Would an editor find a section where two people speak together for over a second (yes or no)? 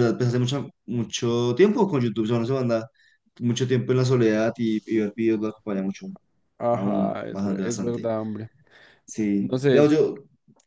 yes